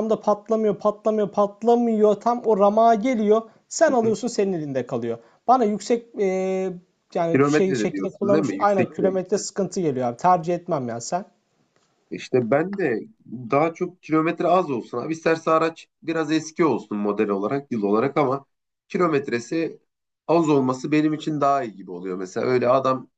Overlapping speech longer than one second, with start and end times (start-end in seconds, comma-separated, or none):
7.3-9.2